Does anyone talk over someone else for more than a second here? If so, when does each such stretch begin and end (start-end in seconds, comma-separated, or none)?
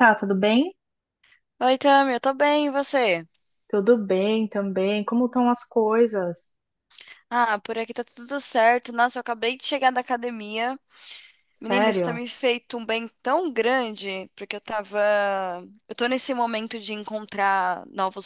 none